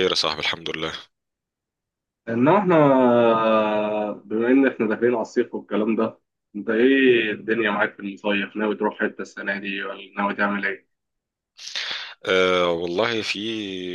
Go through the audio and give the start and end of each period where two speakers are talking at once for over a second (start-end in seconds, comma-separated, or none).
none